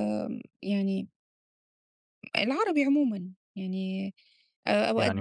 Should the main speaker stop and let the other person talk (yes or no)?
no